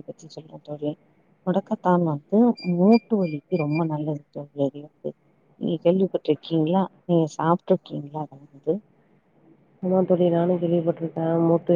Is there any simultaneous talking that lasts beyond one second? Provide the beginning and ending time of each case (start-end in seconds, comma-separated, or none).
none